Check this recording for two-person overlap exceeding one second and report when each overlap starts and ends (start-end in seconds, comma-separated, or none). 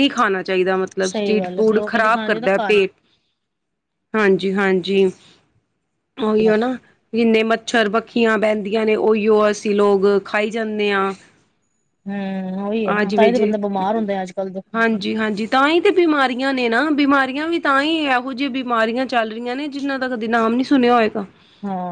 1.1-2.9